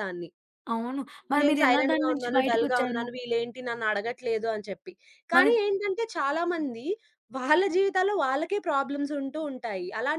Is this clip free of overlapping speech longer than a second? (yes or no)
no